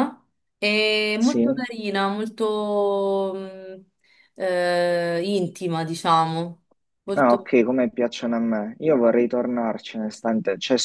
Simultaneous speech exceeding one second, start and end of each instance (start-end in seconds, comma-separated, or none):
none